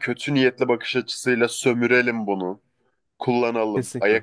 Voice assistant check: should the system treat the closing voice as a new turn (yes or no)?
no